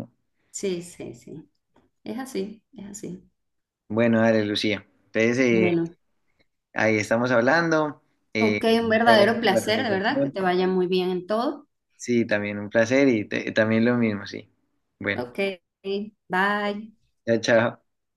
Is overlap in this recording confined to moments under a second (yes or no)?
no